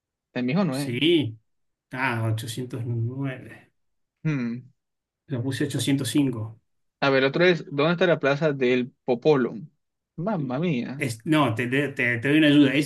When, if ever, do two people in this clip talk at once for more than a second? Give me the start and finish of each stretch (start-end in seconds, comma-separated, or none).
none